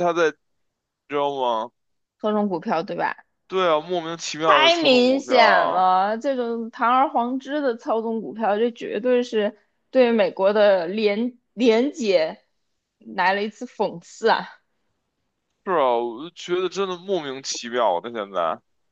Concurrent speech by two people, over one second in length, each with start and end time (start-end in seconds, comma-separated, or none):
4.4-5.9